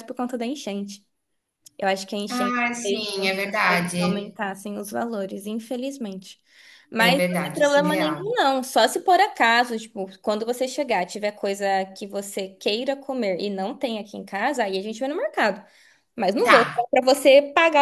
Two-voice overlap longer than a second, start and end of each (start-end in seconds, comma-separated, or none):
2.3-4.3, 7.0-8.2